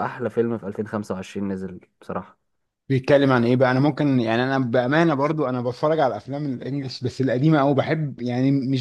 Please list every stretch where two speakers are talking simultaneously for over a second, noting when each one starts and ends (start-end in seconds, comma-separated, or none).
none